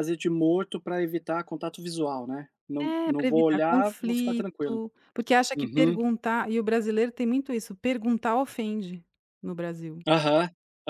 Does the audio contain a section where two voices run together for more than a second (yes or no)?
yes